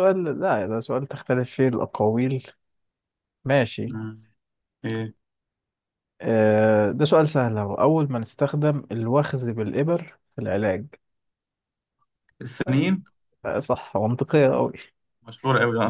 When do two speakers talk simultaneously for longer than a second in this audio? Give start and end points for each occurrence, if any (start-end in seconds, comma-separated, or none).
none